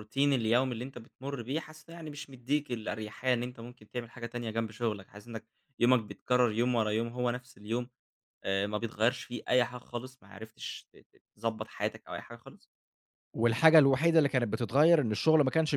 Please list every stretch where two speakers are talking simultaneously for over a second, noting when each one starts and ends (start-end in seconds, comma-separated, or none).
none